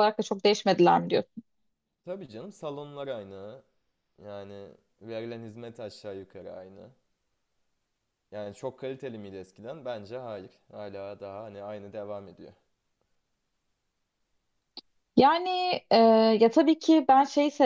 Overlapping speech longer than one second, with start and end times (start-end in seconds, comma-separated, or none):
none